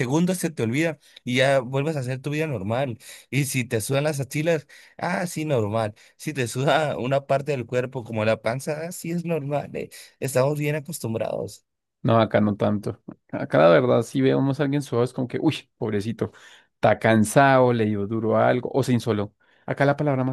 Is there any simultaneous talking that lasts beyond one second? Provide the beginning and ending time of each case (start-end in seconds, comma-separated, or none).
none